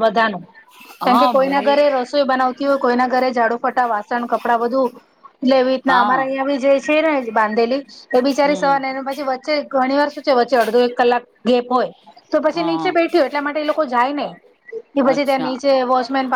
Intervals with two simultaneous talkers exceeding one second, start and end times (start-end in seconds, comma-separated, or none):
none